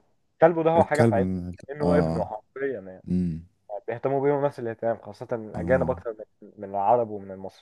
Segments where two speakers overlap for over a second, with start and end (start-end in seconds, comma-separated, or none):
0.8-2.3